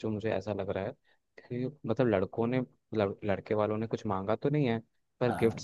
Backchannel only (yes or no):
yes